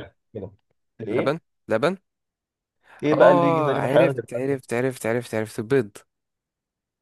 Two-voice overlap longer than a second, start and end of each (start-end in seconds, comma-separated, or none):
3.1-4.6